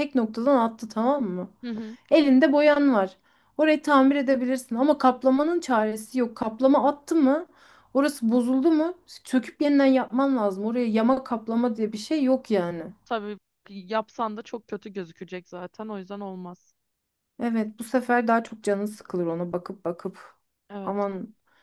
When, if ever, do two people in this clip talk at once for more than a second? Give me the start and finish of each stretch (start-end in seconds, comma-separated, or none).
none